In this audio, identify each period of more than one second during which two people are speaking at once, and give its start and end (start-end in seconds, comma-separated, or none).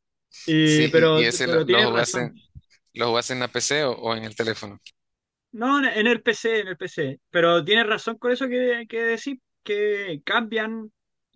0.6-2.3